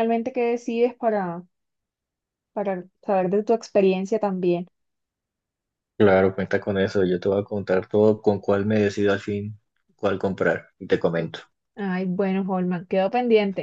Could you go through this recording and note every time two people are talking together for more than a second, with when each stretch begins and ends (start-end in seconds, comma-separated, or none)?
none